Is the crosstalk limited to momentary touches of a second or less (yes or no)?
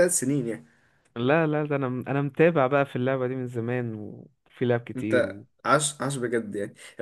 yes